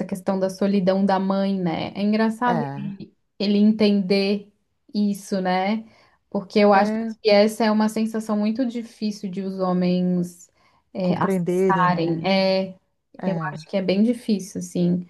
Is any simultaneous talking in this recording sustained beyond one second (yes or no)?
yes